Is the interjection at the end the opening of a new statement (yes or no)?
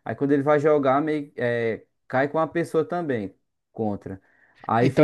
no